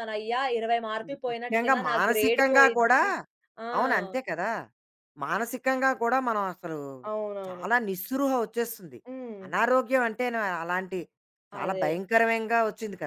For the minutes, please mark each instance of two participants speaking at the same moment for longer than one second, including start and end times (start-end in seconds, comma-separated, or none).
1.1-3.0